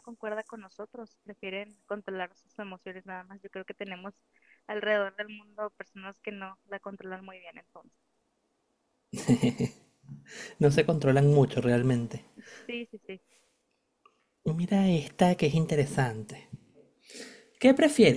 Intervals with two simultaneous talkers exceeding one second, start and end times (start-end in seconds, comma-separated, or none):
none